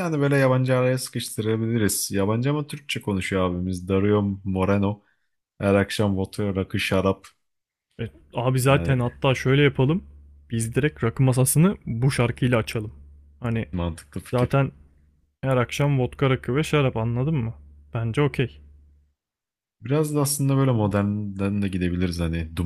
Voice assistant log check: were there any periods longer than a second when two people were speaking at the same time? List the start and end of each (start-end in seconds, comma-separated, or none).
none